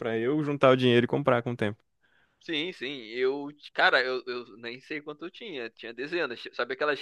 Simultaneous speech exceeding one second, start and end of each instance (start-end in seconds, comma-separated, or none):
none